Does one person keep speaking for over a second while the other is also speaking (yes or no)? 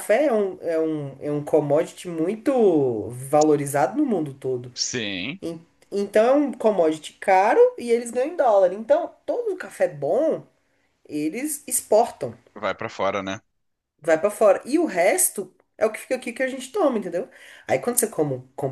no